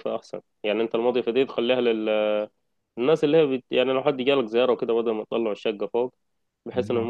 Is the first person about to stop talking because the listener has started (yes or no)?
no